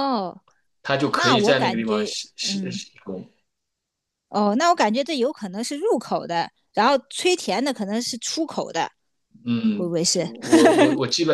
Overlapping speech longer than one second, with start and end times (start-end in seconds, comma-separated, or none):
1.1-2.8